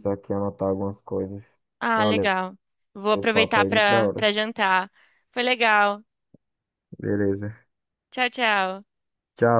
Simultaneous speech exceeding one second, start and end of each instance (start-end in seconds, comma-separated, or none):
3.1-4.3